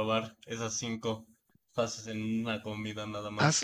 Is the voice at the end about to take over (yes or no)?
yes